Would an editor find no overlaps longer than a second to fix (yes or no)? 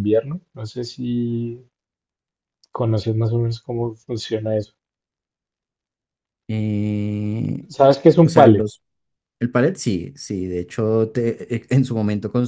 yes